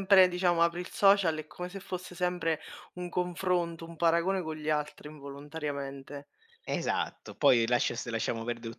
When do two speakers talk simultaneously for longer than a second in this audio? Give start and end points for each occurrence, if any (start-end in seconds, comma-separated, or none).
none